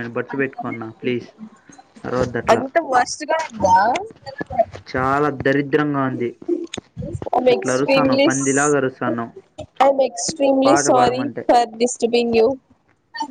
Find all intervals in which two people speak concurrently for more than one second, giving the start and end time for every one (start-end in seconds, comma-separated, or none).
none